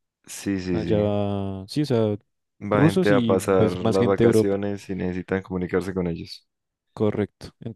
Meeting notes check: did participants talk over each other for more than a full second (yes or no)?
yes